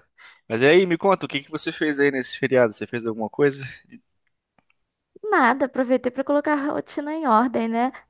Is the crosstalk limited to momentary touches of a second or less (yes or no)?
yes